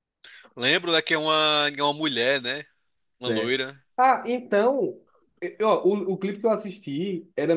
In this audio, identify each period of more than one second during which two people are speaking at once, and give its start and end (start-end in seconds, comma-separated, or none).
none